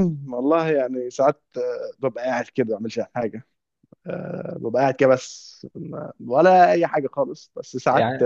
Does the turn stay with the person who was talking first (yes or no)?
yes